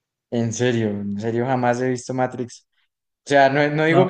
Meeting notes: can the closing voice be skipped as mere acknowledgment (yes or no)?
yes